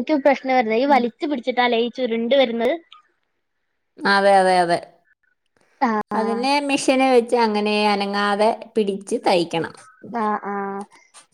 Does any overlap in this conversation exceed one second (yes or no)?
no